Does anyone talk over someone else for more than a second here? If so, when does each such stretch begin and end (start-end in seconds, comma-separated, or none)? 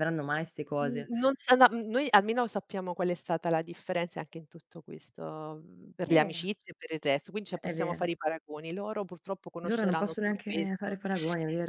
9.7-10.9